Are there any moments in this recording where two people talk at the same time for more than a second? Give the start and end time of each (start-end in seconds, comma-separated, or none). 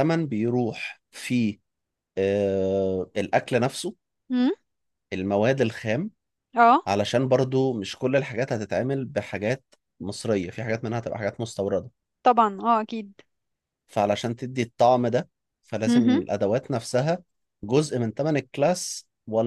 none